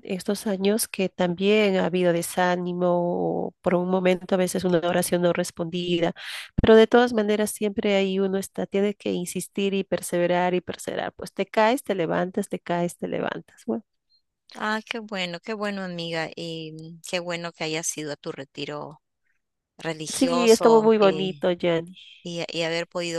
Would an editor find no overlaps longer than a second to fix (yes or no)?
no